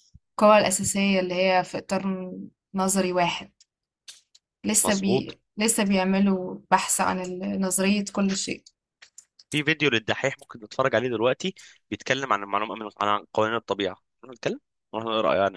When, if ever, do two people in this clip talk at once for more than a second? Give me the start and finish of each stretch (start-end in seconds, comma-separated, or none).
none